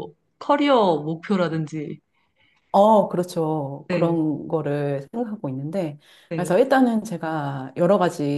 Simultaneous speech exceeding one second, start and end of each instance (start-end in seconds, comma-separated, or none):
none